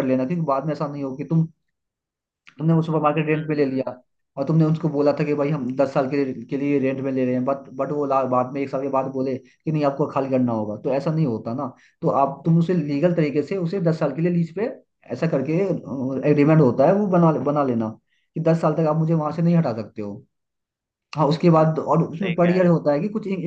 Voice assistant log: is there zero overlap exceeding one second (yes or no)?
no